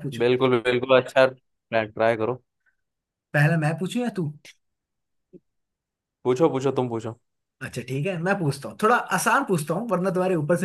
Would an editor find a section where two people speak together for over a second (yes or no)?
no